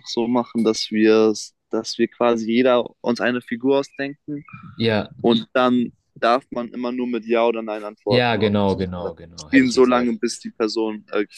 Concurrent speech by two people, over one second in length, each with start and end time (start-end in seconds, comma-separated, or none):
8.1-10.1